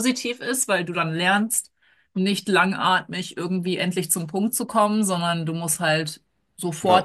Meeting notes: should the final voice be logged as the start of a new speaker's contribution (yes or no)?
no